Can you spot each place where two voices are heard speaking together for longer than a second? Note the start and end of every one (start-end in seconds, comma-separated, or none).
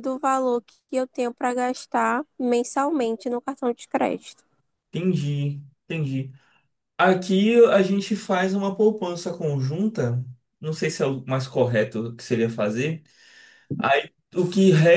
none